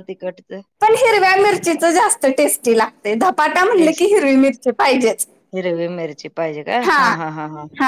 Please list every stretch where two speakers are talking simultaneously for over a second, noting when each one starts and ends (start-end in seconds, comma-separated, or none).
none